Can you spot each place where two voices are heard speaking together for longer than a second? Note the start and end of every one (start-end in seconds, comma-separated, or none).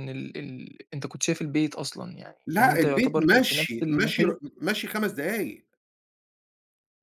2.5-4.5